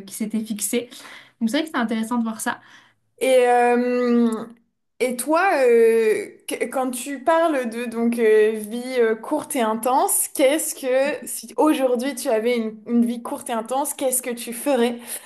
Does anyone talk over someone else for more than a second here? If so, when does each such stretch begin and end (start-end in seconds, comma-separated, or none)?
none